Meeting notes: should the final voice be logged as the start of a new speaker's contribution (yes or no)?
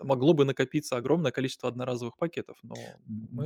yes